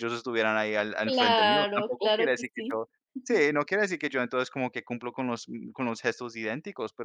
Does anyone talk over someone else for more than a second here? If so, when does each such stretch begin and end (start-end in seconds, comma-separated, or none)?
1.1-2.8